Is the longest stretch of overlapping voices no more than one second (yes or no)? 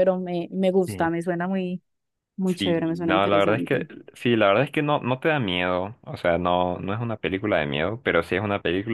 no